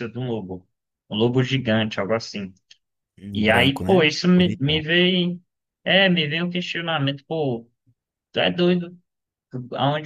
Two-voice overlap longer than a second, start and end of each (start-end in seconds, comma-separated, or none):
3.3-4.8